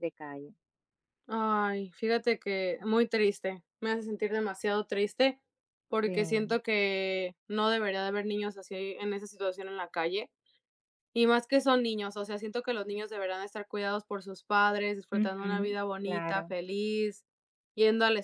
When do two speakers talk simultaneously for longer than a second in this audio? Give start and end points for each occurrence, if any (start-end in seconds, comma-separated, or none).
15.1-16.5